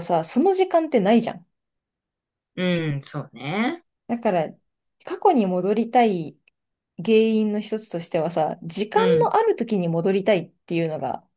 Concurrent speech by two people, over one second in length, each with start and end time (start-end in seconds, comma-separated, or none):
none